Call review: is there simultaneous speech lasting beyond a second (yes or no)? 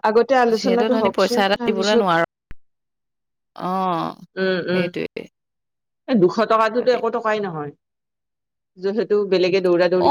yes